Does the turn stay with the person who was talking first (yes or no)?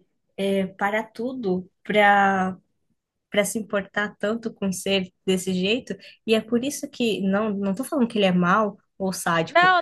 no